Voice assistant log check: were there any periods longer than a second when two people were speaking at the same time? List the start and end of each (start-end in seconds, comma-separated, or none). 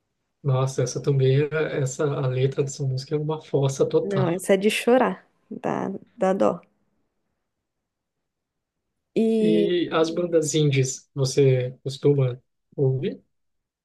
none